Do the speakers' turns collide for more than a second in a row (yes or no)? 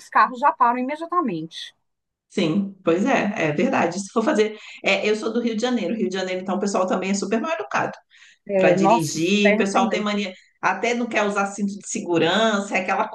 yes